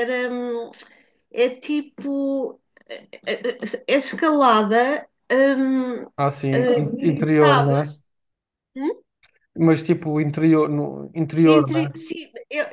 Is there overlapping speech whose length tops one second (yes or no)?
yes